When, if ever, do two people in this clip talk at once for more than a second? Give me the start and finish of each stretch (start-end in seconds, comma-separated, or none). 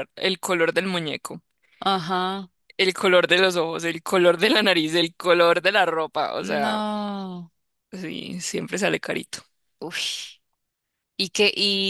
none